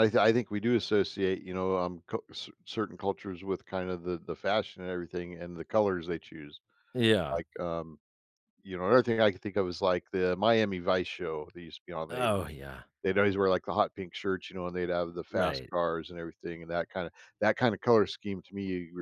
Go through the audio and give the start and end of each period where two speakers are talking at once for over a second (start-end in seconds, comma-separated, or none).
none